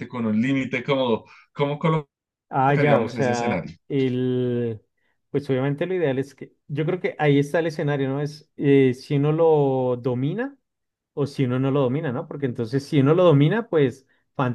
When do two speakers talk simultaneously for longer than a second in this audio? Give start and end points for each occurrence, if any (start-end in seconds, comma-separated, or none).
2.5-3.8